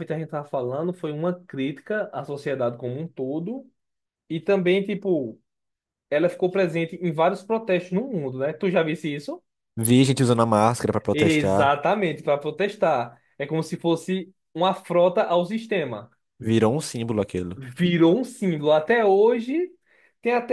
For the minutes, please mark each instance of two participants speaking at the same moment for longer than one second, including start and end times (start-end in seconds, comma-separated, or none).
none